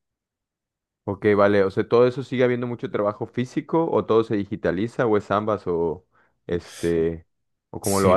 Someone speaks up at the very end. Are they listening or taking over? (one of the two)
taking over